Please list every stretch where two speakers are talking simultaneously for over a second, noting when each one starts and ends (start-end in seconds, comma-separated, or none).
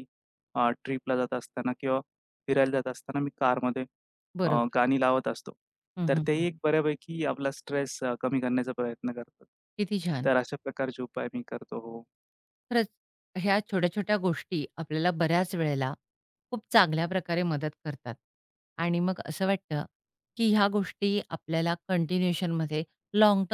none